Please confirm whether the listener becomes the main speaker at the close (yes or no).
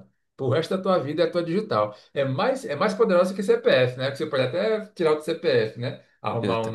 no